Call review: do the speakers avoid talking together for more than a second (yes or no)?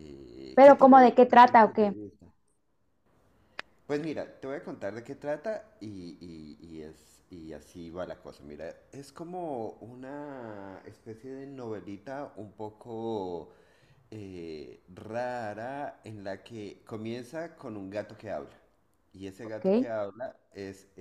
no